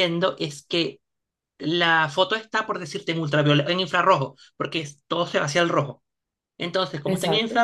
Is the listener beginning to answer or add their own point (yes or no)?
no